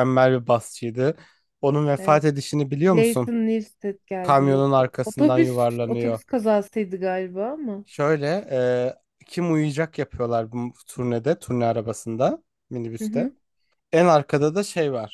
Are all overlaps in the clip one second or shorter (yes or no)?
no